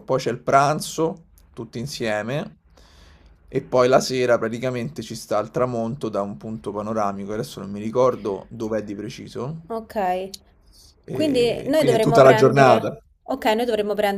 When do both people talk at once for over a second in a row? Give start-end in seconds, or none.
11.1-13.0